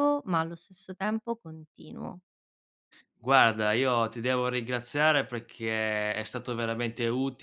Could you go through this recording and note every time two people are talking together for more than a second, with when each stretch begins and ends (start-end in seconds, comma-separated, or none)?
none